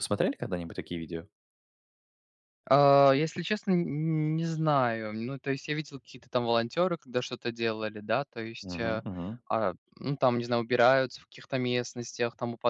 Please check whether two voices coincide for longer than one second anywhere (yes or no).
no